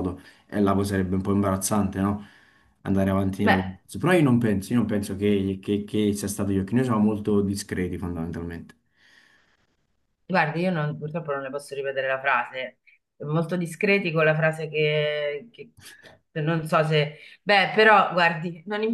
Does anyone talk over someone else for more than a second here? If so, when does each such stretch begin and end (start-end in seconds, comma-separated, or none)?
none